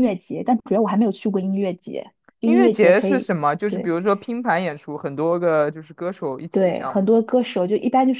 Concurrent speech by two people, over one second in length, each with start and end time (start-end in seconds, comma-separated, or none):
2.4-3.9